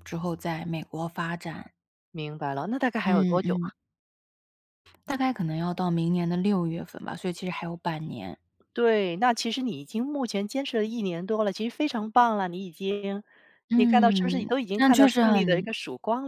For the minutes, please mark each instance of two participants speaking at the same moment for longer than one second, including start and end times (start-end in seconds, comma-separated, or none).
13.7-15.7